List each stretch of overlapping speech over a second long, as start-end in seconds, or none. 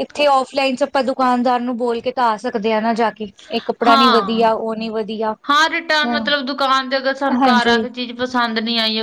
none